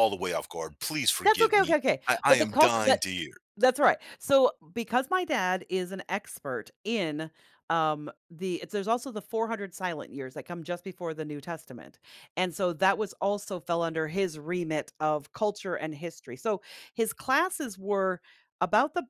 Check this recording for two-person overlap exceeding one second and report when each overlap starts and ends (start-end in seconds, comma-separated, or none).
1.2-3.0